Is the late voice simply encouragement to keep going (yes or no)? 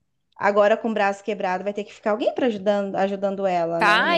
no